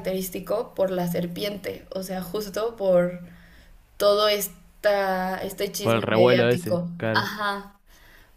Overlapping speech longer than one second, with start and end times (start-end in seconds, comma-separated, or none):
5.8-7.3